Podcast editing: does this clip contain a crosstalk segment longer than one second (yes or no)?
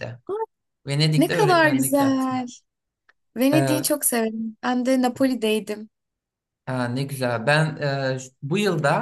yes